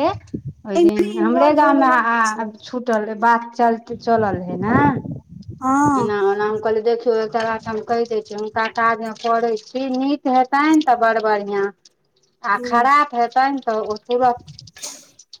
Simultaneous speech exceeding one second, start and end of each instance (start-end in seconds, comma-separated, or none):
0.8-2.5